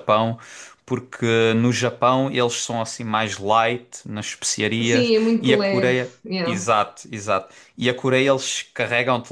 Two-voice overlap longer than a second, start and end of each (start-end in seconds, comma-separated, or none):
4.8-6.7